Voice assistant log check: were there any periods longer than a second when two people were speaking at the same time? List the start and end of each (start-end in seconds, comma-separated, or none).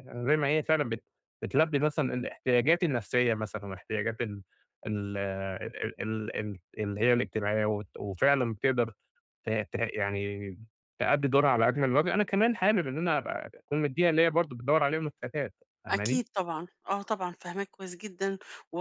none